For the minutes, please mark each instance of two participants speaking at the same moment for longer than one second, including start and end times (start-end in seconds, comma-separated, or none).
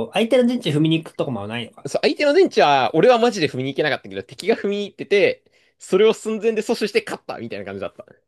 none